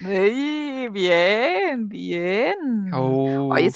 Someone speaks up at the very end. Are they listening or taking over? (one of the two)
listening